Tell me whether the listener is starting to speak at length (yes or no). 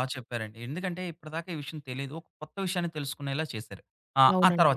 yes